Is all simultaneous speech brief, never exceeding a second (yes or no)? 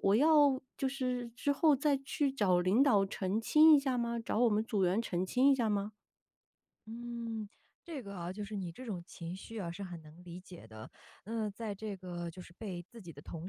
yes